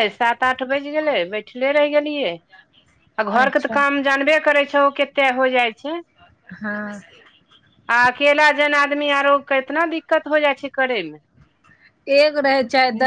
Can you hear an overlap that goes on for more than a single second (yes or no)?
no